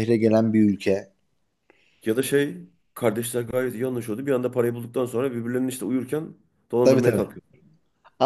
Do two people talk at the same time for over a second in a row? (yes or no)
no